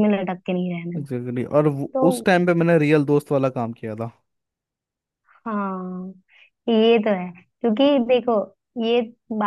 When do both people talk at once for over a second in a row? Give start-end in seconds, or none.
none